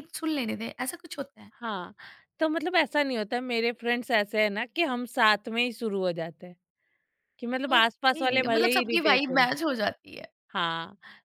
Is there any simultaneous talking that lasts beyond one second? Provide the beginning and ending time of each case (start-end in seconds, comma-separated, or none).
7.8-9.5